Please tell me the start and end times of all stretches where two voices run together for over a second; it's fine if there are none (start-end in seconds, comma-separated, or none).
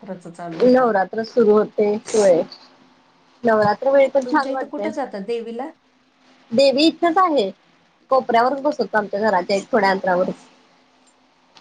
none